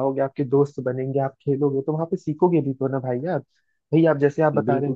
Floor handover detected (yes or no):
no